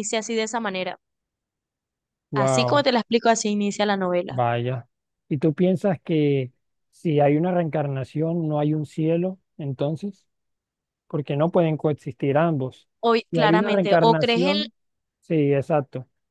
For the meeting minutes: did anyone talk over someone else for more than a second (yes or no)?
yes